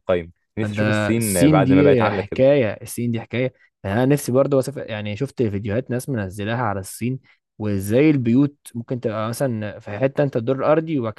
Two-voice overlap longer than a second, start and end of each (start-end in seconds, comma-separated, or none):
0.6-2.4